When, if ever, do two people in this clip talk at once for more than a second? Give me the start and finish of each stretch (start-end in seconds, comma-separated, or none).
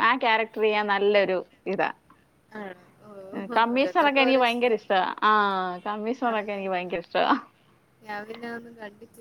3.6-4.8